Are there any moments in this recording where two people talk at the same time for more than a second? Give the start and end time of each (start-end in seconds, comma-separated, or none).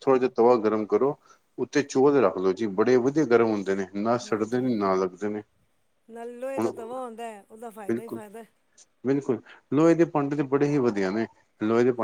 none